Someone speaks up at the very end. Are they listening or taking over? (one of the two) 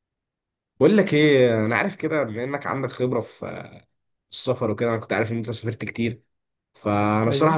listening